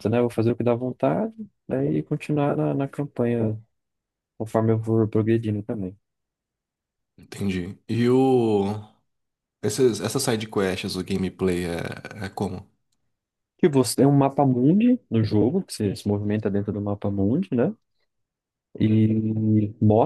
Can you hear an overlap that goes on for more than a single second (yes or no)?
no